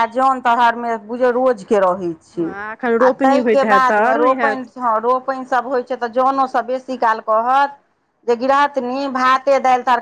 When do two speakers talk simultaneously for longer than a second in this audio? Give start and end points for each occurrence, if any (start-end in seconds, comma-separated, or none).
2.4-4.6